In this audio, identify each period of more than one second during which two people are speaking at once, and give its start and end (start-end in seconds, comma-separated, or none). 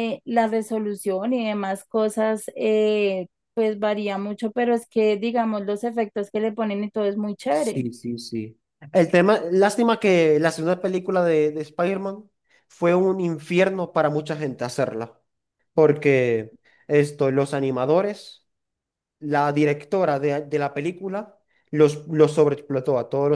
none